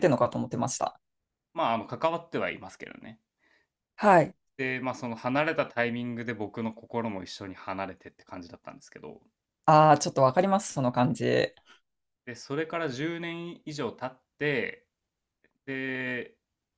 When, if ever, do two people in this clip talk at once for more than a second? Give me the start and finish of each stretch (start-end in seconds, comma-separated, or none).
none